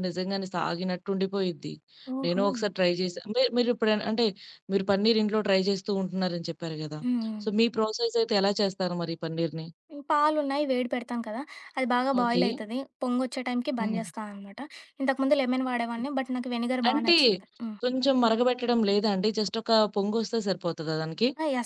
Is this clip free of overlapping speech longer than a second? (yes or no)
yes